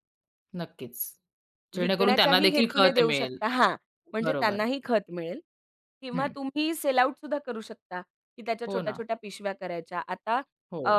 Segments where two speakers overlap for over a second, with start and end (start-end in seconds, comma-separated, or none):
1.8-3.4